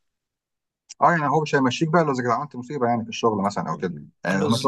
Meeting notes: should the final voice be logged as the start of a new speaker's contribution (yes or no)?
no